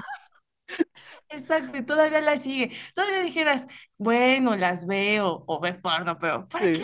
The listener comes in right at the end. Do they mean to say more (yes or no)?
yes